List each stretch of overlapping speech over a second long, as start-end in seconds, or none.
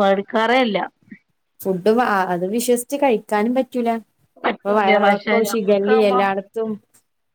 4.6-6.2